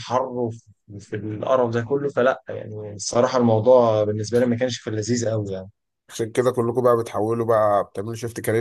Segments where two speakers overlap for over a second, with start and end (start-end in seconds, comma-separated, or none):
none